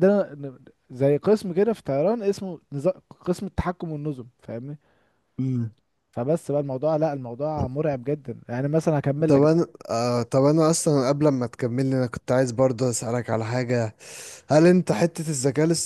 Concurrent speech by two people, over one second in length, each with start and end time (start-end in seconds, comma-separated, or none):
none